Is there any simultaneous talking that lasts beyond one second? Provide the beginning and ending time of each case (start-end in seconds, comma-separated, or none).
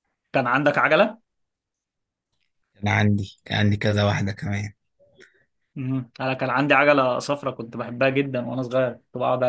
none